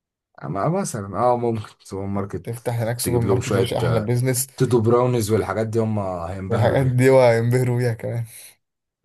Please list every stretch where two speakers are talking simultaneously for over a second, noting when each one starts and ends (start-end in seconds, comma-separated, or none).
2.4-4.1